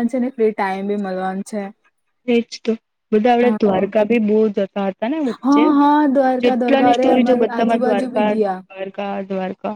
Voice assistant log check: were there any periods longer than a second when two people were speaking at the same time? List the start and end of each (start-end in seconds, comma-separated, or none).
6.5-8.6